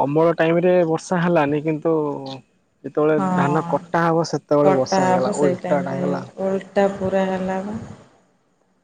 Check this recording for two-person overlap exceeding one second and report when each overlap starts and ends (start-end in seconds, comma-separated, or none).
4.7-6.0